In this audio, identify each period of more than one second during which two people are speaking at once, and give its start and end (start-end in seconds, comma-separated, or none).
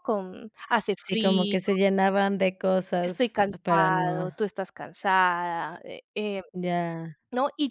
3.0-4.4